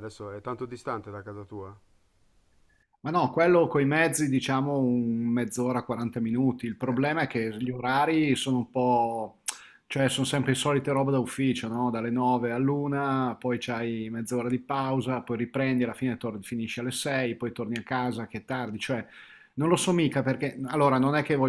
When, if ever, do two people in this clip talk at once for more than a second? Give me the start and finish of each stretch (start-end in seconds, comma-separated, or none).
none